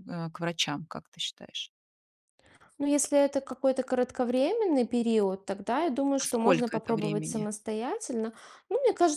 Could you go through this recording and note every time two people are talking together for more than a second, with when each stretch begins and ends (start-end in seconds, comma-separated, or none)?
6.2-7.5